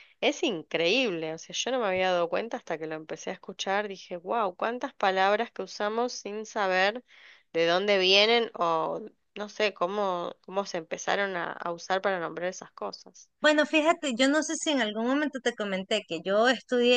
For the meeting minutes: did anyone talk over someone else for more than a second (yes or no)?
no